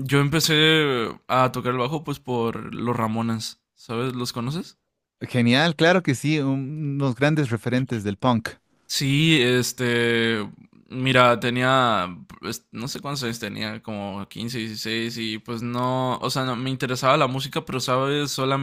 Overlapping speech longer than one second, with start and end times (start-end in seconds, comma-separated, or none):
none